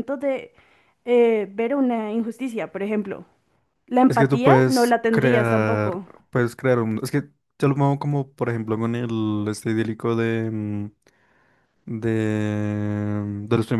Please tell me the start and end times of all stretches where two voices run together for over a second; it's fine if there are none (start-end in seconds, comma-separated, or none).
4.1-6.0